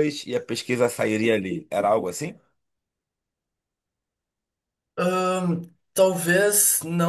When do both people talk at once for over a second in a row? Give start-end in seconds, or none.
none